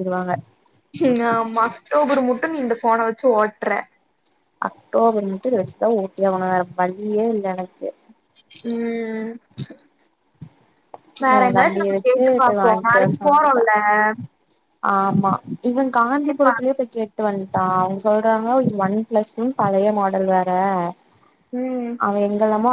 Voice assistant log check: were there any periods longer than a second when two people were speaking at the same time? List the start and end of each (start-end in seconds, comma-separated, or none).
11.4-13.7